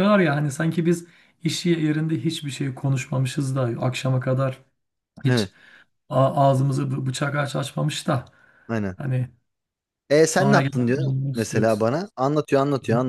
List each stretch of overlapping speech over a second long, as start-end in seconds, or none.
10.3-11.8